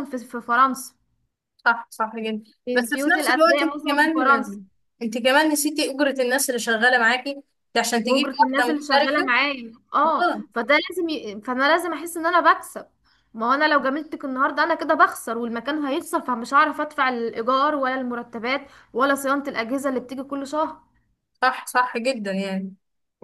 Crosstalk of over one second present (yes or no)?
yes